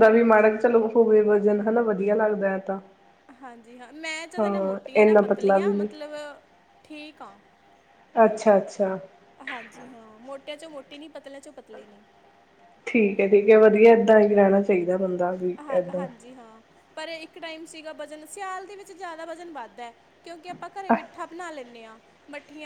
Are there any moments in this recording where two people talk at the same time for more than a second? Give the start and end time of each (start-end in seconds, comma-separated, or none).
4.4-5.9